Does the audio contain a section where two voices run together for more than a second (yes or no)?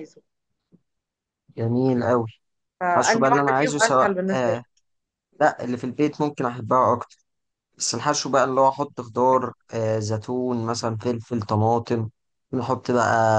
yes